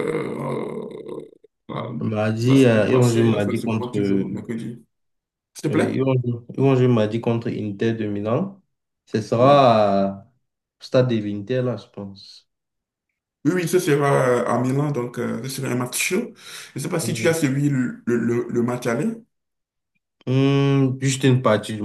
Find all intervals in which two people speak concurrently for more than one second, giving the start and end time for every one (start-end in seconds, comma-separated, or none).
2.4-4.0